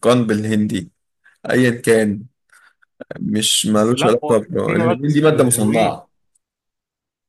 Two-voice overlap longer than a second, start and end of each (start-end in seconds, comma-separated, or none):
3.8-5.9